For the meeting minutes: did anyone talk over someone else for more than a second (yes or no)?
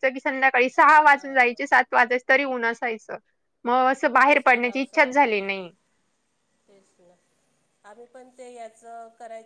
yes